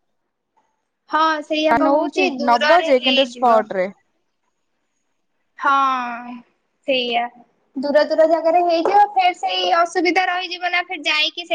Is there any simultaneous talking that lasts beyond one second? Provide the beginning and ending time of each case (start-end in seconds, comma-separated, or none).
1.9-3.6